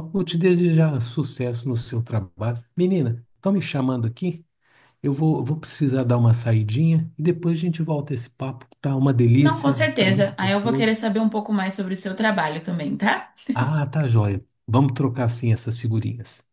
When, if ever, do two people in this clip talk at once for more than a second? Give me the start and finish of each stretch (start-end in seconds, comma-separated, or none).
9.4-11.0